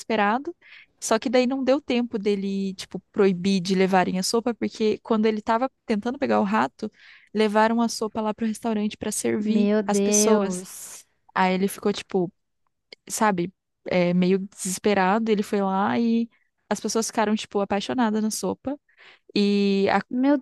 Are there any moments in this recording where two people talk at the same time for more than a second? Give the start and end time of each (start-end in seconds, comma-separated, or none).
9.4-10.7